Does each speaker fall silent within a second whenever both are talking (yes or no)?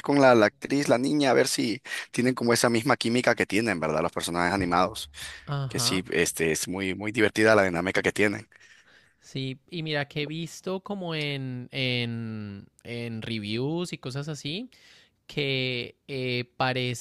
yes